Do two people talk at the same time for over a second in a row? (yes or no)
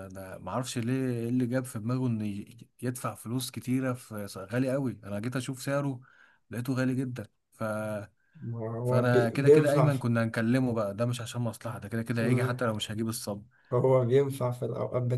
yes